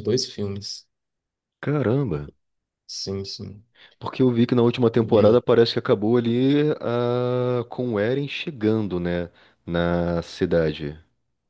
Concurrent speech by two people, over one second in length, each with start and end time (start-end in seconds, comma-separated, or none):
none